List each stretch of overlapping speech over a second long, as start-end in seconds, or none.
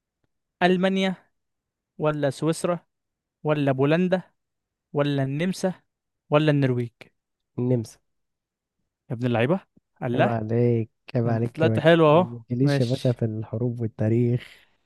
11.2-13.2